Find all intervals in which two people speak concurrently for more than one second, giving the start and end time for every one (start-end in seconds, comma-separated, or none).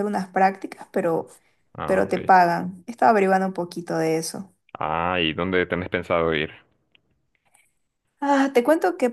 none